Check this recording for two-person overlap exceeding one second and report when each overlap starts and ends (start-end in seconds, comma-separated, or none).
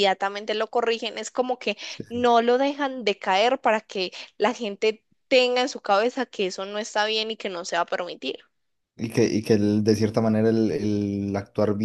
none